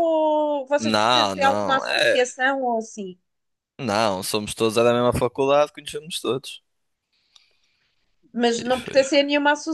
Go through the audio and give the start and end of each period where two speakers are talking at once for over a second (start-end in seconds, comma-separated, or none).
0.8-2.2